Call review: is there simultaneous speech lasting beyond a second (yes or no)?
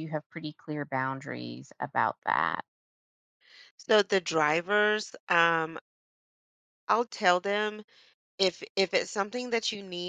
no